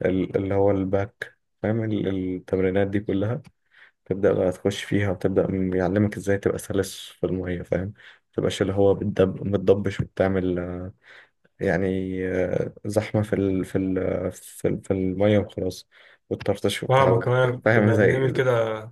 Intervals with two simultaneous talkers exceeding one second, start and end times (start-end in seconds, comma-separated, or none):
16.9-18.3